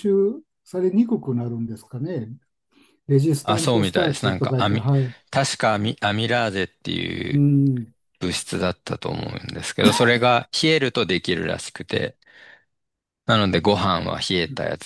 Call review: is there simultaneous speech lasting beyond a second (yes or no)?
yes